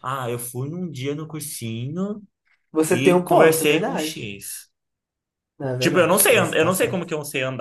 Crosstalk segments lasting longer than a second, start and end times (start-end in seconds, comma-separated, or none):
2.9-4.3, 5.8-7.1